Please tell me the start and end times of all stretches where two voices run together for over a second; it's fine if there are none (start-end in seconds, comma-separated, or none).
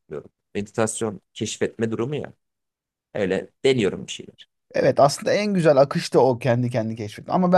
none